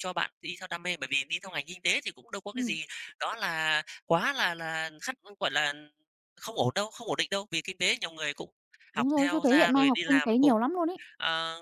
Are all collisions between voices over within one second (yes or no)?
no